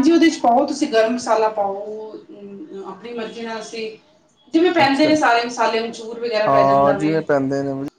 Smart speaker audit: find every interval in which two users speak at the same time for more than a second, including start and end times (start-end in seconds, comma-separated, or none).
none